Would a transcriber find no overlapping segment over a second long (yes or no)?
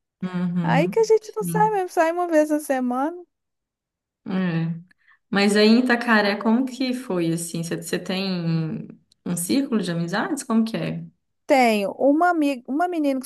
no